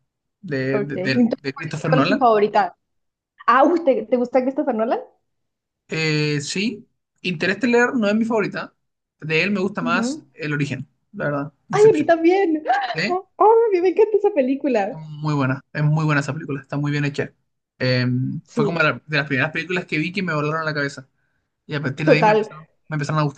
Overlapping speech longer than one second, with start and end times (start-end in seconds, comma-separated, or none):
0.7-2.2